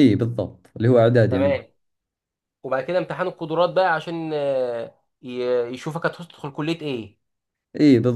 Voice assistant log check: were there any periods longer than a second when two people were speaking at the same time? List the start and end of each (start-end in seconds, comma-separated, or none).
none